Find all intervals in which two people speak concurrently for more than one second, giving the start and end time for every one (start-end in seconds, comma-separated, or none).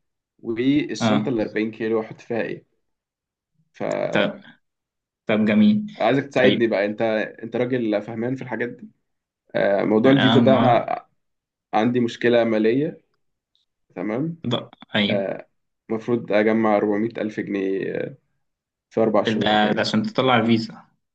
none